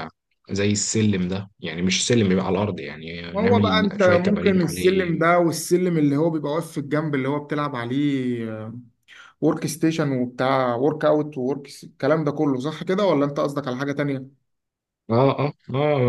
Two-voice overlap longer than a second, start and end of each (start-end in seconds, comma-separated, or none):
3.3-5.3